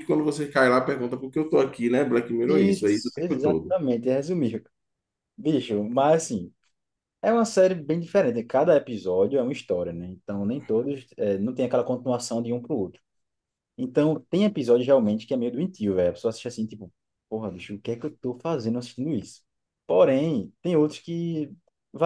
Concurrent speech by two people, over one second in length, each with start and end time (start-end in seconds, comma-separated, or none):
2.5-3.7